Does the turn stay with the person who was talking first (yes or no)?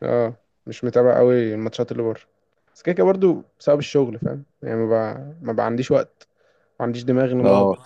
yes